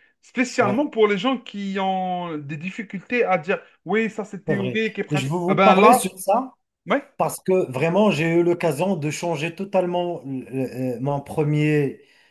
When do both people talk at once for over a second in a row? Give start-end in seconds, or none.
4.5-6.2